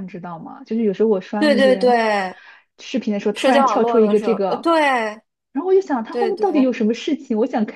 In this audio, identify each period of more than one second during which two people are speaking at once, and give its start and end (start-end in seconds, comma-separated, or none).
3.3-4.7